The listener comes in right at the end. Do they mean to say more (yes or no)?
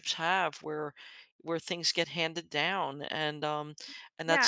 yes